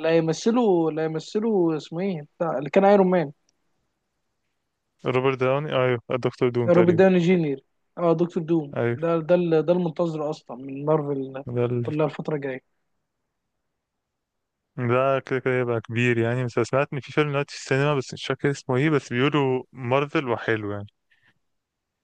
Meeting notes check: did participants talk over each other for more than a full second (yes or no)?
no